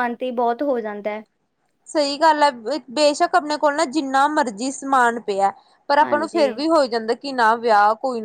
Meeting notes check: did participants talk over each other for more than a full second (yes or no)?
no